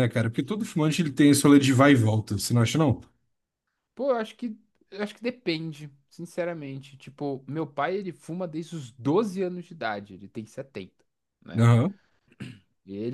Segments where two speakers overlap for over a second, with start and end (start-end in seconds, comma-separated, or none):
none